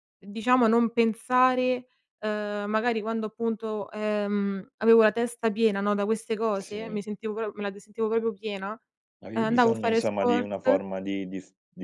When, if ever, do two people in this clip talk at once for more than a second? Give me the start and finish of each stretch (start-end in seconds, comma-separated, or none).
9.3-10.8